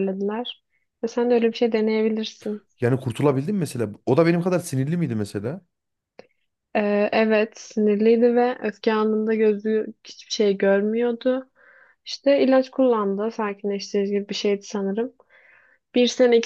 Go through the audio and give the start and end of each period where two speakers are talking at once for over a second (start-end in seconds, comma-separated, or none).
none